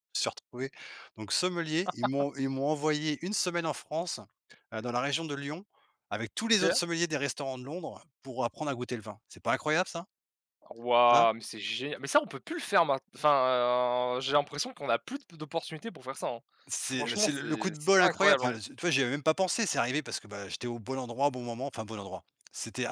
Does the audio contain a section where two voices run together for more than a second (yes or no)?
yes